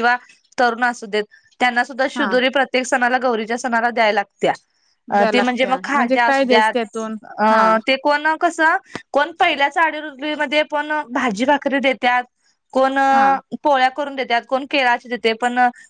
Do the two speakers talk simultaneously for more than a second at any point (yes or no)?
yes